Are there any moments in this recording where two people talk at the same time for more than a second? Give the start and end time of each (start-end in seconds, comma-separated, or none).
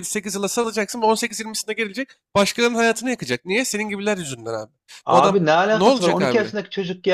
5.1-6.5